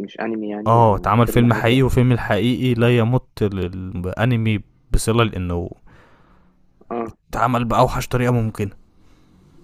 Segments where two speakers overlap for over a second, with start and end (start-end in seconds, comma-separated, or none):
0.7-1.9